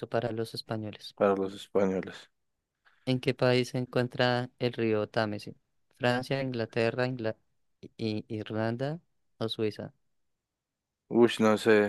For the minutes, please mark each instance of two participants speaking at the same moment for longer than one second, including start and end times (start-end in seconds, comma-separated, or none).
none